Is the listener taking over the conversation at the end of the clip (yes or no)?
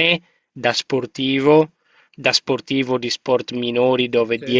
no